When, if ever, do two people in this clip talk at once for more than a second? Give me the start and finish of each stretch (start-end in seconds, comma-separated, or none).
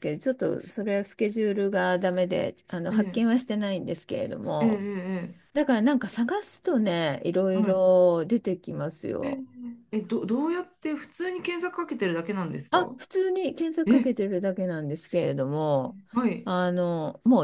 none